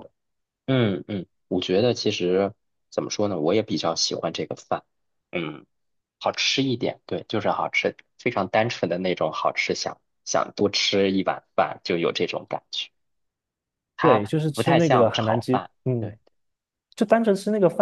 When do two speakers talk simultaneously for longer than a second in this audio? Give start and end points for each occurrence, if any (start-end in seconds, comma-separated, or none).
14.0-16.2